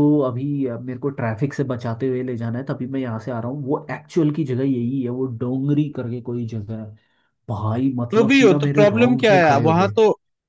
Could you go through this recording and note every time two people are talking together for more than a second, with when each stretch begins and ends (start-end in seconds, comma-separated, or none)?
8.1-9.9